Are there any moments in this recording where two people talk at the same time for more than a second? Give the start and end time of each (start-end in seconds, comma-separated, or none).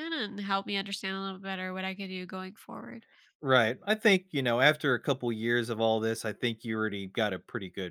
none